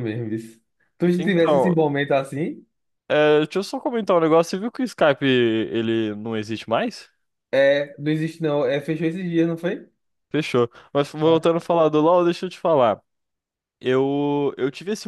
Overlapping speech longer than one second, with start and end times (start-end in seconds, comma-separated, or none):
none